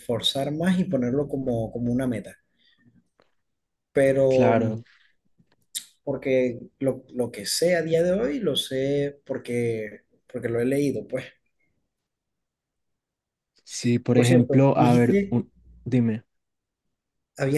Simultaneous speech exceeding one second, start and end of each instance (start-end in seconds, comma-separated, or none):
14.1-15.4